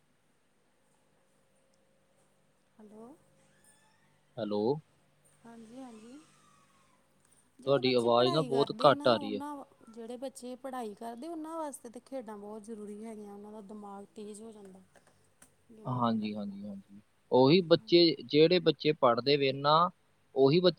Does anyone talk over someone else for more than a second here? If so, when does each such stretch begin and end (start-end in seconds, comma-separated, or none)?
7.6-9.4